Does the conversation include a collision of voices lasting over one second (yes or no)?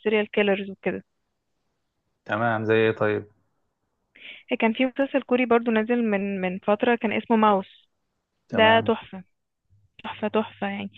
no